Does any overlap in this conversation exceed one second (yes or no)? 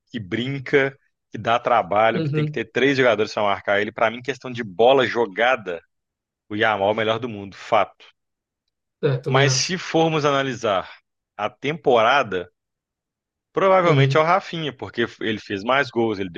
no